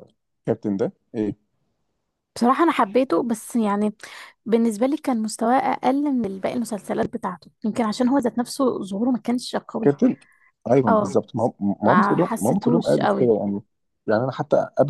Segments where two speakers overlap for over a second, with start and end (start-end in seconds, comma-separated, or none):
11.8-13.3